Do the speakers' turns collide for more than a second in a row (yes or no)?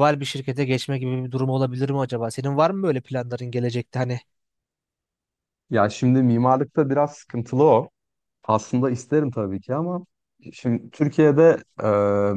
no